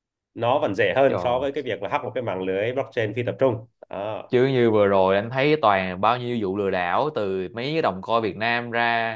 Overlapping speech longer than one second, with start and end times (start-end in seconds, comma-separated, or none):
none